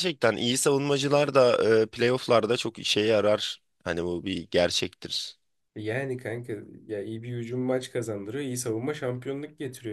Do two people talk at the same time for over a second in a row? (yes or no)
no